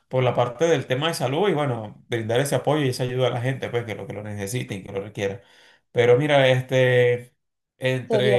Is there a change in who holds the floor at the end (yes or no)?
no